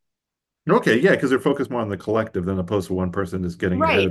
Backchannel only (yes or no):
no